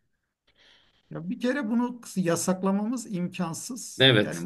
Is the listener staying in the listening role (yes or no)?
yes